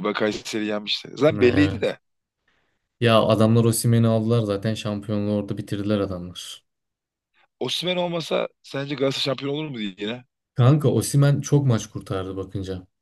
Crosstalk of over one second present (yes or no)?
no